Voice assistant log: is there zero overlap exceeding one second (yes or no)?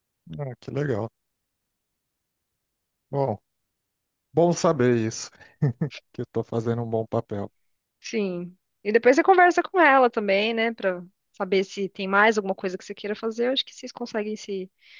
yes